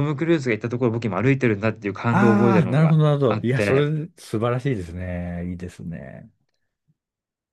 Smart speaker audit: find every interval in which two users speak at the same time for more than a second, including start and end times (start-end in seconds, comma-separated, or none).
2.1-3.8